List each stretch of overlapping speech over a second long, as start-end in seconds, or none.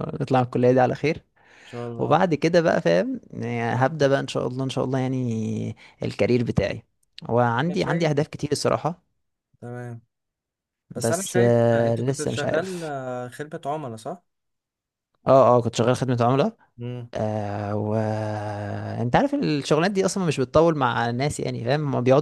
11.0-12.9